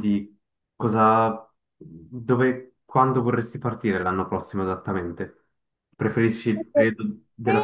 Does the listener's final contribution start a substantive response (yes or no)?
yes